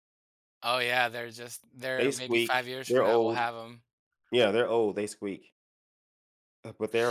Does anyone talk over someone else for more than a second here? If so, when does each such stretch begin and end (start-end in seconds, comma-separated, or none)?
2.0-3.5